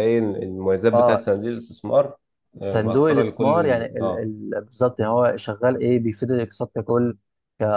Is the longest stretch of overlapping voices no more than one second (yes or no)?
no